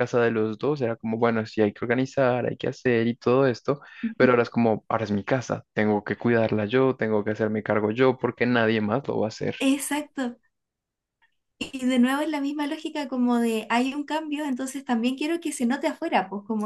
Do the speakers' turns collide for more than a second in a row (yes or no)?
no